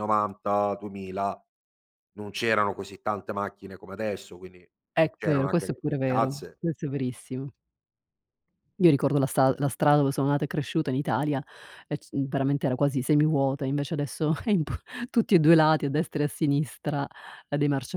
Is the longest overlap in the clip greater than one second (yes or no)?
yes